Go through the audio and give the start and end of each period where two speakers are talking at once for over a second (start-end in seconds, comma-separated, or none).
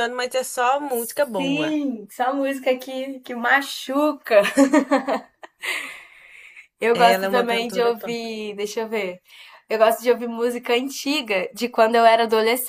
6.9-8.2